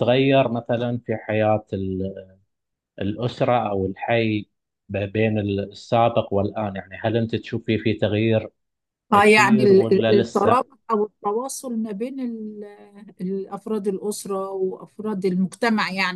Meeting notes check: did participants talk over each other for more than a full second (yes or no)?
yes